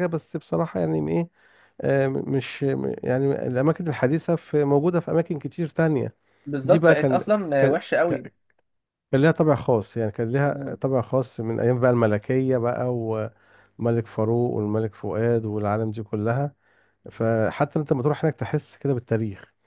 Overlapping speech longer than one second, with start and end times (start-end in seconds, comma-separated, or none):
6.6-8.3